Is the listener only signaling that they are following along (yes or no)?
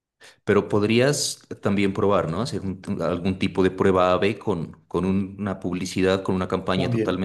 yes